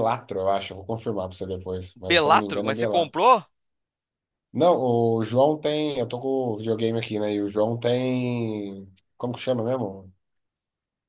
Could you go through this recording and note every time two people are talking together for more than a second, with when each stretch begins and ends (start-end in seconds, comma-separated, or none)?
1.9-3.2